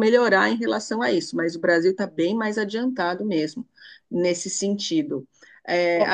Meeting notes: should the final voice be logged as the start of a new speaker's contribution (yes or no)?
no